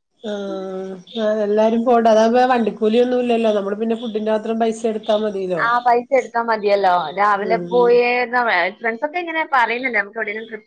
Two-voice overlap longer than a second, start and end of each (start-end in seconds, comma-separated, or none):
none